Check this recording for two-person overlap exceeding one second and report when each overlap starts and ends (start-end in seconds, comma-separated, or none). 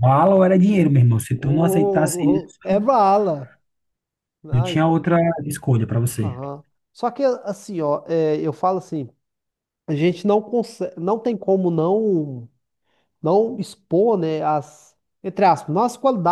1.3-2.9